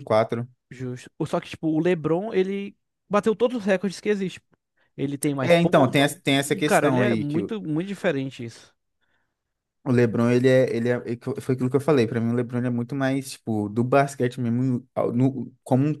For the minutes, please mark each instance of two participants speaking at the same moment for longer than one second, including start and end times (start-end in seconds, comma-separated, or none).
5.4-7.4